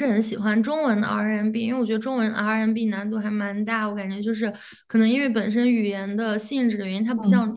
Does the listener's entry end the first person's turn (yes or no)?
yes